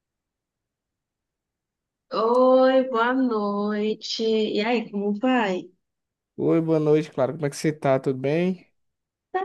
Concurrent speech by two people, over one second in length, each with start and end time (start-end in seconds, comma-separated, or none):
none